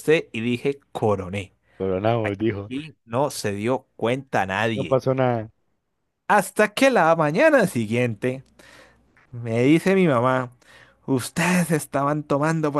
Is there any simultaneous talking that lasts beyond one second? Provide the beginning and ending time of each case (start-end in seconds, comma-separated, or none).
none